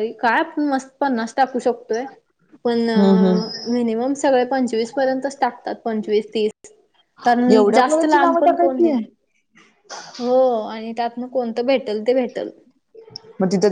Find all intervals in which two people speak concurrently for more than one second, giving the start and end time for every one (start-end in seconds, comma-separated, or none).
7.5-8.9